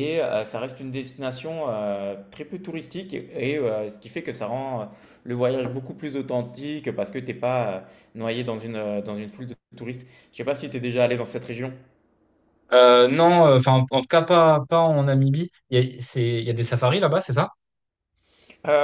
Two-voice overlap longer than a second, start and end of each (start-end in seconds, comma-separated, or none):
none